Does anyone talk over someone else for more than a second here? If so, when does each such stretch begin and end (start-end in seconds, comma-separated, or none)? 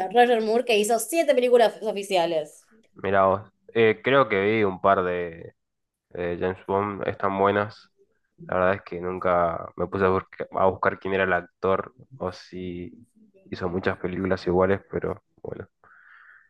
none